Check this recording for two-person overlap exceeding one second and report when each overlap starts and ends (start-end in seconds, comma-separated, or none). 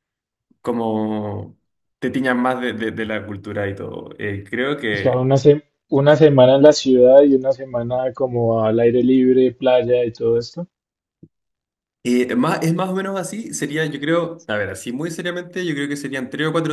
none